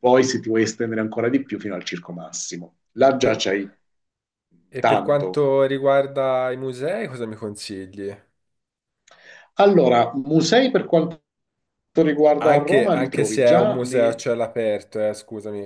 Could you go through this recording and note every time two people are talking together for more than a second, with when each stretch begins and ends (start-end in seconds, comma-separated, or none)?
12.4-14.2